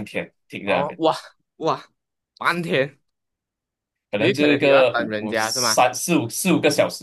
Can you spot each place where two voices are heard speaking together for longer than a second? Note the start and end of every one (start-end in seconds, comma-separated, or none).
4.2-5.8